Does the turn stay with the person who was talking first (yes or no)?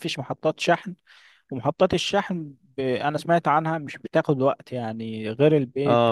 no